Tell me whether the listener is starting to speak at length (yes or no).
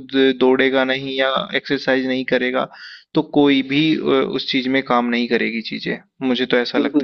yes